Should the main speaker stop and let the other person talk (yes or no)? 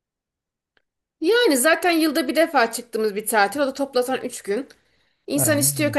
no